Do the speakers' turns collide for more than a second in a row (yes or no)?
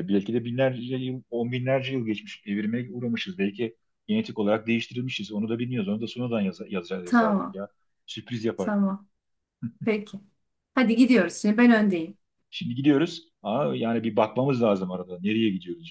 no